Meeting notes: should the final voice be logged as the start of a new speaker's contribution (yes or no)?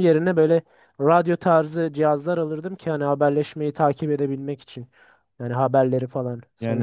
yes